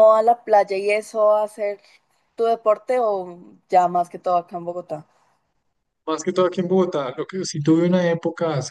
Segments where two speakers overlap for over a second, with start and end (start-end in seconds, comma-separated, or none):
none